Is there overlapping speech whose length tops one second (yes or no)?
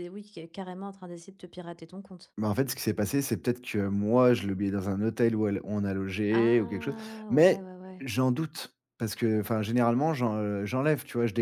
yes